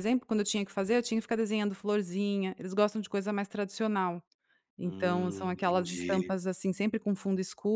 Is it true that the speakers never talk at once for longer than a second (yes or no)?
no